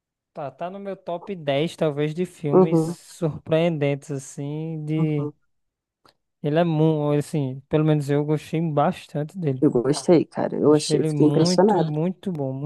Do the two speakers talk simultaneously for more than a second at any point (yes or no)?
yes